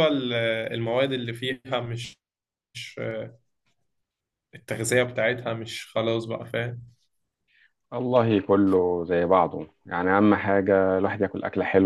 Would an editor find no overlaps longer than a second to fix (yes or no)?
yes